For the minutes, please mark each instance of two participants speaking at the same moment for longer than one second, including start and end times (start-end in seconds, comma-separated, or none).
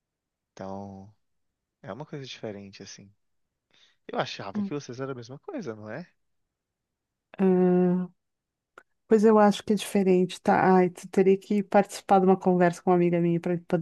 none